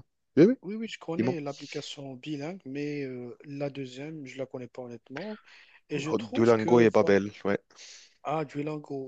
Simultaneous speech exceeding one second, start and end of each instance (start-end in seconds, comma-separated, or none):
5.9-7.2